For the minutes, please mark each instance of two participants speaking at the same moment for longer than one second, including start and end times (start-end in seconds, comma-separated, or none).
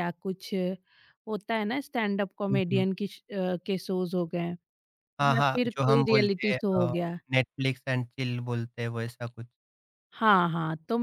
5.3-6.9